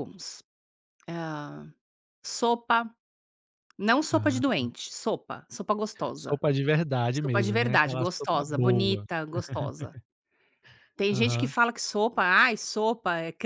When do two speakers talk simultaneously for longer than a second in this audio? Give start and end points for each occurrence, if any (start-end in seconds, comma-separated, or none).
7.2-9.1